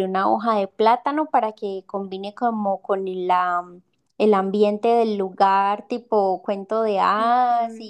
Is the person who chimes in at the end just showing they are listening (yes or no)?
no